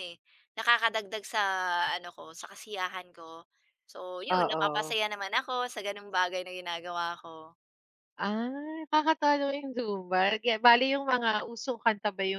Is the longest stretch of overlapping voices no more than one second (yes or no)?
yes